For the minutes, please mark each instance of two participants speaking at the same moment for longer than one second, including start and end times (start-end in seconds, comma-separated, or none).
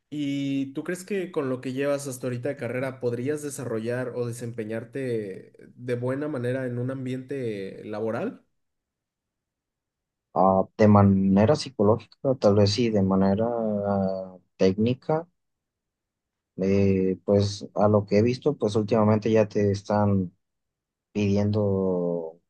none